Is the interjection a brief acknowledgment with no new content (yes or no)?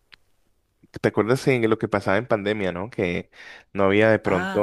yes